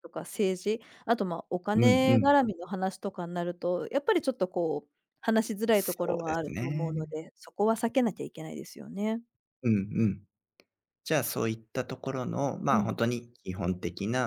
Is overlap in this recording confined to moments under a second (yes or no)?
no